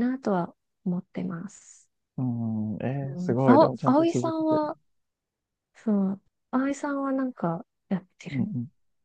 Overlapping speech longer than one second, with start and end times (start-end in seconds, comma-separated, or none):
3.0-4.6